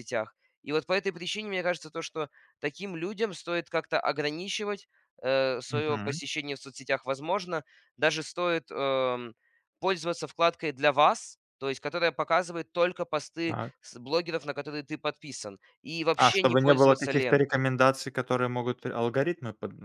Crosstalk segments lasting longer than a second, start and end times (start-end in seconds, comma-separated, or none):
16.2-17.6